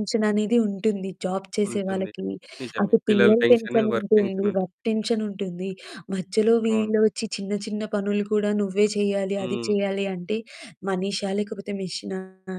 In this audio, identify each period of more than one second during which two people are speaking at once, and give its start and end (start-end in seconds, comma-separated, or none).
2.8-4.6